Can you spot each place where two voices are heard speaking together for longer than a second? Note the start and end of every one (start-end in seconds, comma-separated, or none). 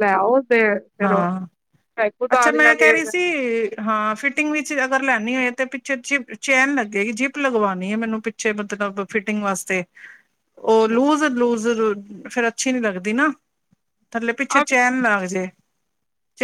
none